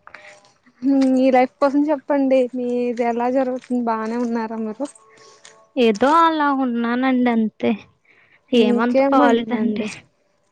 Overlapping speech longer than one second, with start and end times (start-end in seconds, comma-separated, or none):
8.6-9.9